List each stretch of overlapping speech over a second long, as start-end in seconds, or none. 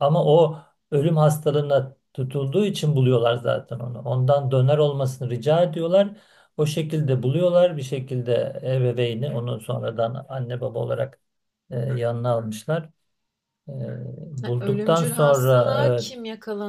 14.5-16.1